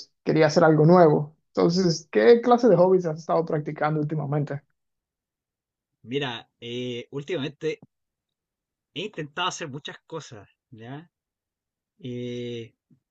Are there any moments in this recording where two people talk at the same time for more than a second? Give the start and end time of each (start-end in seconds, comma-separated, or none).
none